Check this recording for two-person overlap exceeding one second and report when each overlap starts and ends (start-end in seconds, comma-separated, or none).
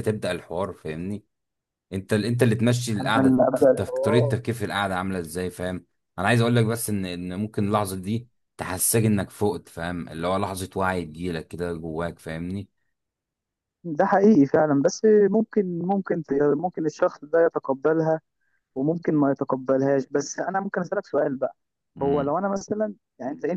3.0-4.4